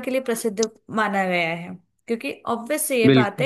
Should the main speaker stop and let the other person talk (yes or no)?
no